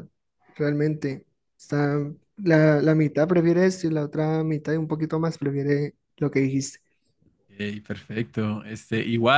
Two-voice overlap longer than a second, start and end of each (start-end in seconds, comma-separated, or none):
none